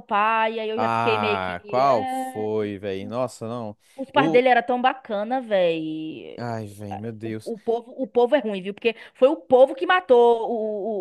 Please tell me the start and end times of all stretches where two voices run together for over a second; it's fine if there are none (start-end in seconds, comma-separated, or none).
0.7-2.5